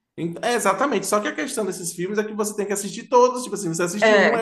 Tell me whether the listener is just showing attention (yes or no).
yes